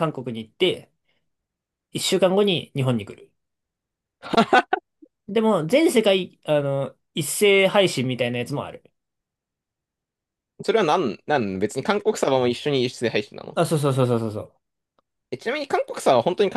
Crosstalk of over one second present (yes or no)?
no